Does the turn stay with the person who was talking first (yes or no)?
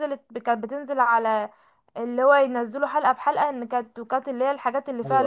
yes